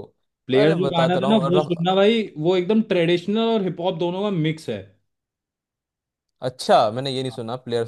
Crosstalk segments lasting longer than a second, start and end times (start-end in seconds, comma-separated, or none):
0.5-2.1